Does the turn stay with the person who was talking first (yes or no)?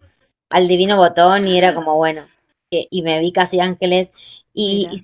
yes